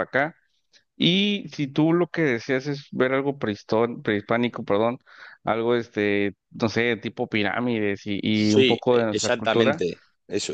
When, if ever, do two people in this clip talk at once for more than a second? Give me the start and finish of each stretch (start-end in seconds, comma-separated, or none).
8.3-9.8